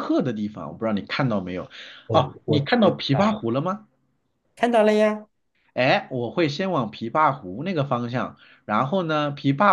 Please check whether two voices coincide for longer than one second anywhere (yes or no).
yes